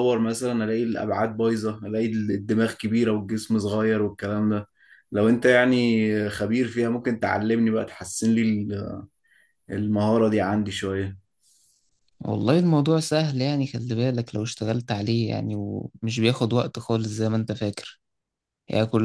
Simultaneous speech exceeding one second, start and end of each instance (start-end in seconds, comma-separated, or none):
none